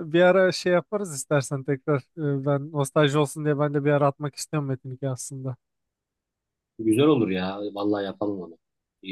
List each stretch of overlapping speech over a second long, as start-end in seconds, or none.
none